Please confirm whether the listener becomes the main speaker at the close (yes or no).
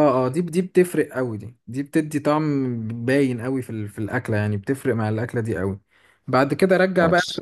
no